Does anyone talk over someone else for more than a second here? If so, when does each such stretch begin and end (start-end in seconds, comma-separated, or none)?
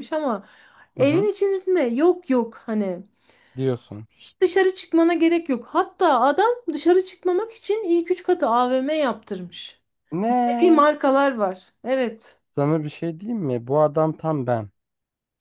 none